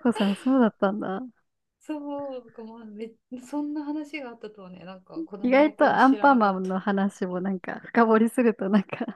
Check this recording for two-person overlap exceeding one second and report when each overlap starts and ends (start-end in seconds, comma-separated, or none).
5.4-6.8